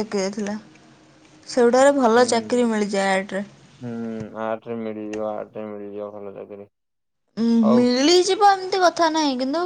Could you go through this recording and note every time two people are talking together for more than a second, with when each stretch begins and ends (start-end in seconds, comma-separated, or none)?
none